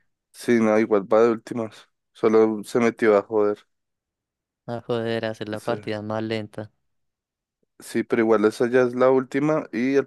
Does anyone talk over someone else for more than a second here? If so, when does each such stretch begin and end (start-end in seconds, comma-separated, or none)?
none